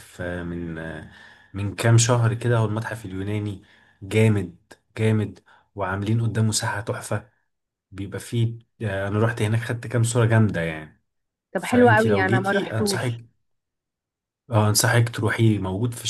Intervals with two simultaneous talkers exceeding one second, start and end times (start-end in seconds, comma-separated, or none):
11.6-13.2